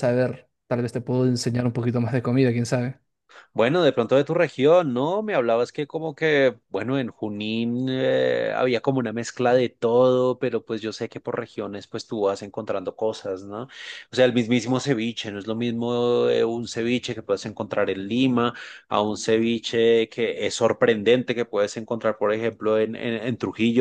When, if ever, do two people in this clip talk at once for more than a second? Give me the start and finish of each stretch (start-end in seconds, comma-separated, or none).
none